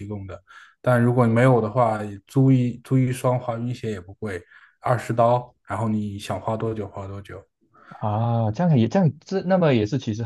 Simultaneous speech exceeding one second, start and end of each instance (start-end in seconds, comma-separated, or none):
none